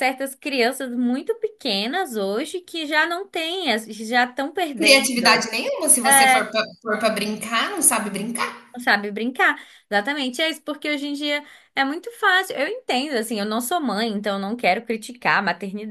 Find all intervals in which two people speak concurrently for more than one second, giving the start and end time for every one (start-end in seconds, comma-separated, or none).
none